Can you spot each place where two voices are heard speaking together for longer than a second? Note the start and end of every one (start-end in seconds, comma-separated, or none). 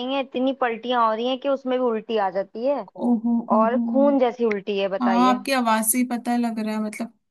none